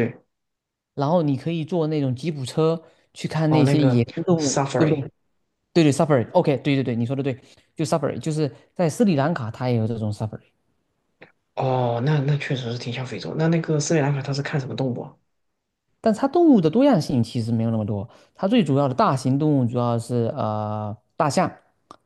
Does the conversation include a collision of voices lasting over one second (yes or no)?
yes